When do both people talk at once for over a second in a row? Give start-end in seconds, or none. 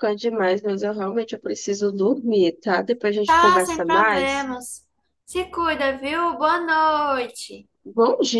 3.2-4.5